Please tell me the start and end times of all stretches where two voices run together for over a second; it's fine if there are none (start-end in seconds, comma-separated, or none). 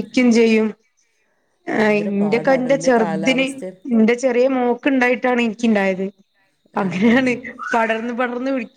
1.8-3.5